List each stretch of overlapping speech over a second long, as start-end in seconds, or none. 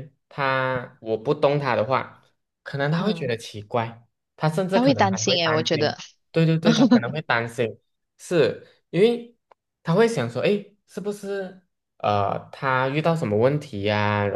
4.7-6.0